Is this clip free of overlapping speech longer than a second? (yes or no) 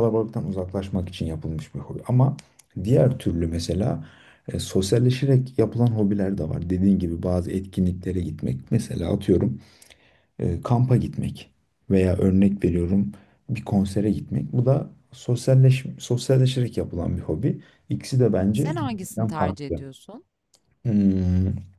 no